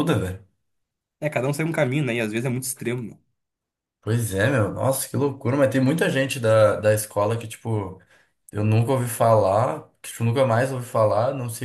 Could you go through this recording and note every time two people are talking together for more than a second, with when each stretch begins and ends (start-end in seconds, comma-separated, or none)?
none